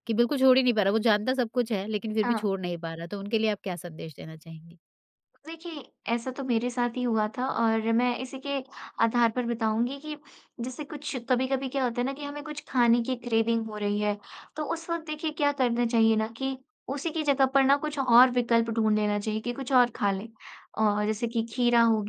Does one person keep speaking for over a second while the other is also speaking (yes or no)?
no